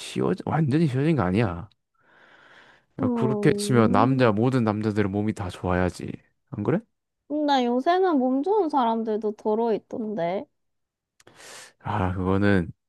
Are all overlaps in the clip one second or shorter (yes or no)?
no